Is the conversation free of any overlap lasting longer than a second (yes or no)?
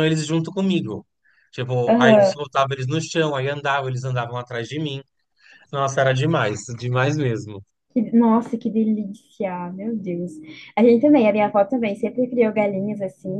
yes